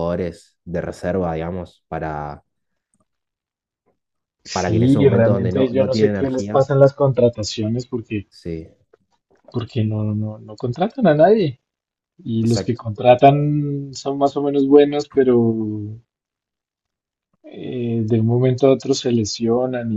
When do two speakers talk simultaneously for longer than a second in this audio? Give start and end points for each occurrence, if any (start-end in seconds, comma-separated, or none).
4.5-6.7